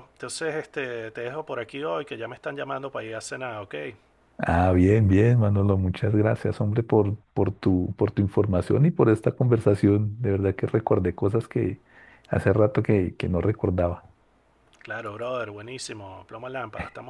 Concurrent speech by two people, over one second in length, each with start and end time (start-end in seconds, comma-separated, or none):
none